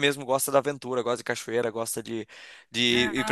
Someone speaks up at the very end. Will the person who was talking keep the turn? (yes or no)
no